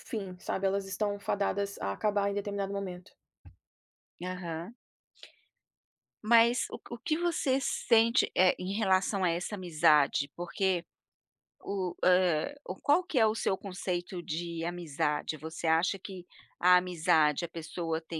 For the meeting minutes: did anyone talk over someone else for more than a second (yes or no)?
no